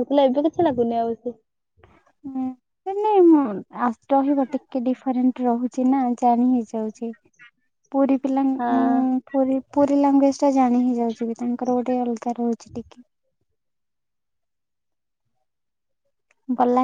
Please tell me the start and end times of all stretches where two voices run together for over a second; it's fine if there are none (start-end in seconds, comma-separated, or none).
none